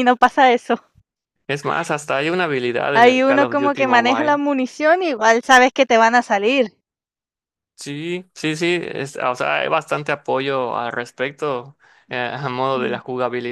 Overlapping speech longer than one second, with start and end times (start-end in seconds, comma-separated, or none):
2.9-4.4